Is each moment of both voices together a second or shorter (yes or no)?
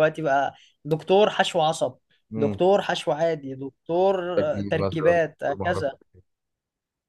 no